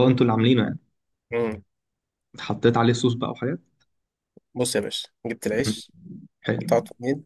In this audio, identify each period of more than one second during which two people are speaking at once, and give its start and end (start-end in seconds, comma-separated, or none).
none